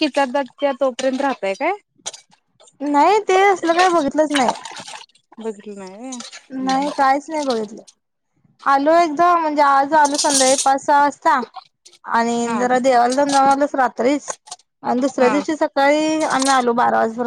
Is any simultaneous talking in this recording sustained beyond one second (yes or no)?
no